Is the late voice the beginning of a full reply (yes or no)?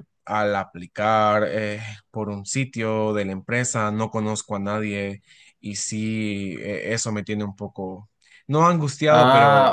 no